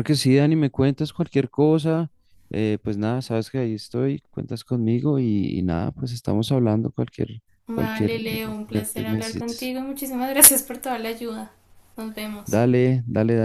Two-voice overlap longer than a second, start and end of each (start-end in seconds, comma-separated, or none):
7.7-9.8